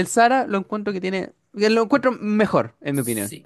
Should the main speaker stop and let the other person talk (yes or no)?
yes